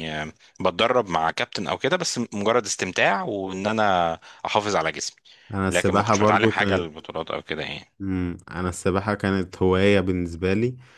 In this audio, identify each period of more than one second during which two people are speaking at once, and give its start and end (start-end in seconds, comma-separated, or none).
5.7-7.0